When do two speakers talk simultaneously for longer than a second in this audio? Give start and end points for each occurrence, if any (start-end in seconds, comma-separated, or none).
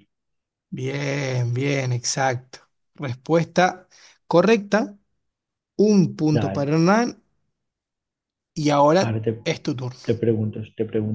none